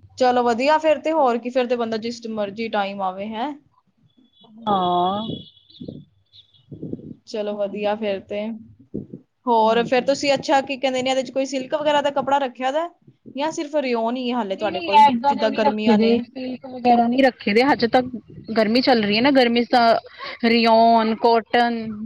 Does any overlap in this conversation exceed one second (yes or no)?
no